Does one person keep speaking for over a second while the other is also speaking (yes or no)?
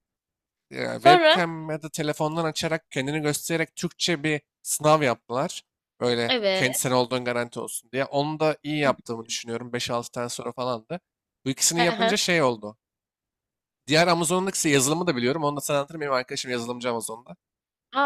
no